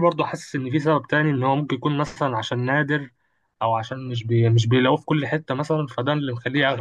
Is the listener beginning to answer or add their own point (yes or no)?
yes